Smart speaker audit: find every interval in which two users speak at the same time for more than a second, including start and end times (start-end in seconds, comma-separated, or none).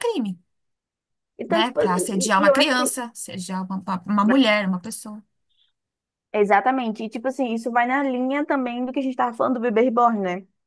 1.5-2.9